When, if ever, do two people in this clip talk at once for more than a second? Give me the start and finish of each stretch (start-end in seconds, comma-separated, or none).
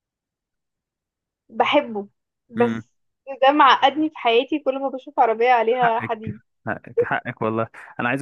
none